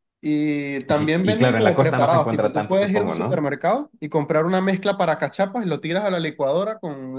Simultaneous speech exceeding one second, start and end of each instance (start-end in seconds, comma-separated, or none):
0.9-3.5